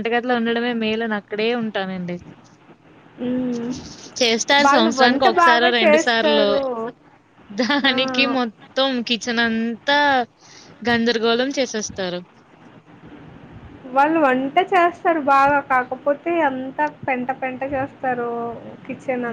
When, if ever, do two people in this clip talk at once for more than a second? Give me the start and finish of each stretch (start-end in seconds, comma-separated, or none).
4.7-6.5